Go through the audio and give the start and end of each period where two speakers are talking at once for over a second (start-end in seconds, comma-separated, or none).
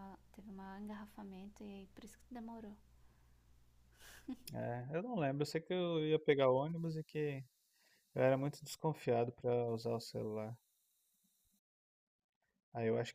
none